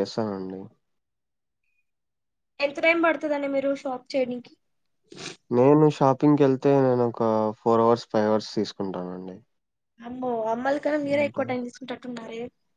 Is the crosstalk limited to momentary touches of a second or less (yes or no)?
yes